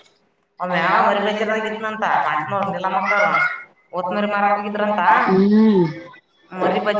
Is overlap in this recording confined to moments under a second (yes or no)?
no